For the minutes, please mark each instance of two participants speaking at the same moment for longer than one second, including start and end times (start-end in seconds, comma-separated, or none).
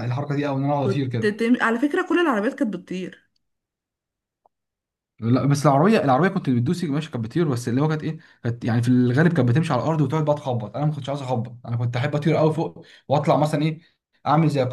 none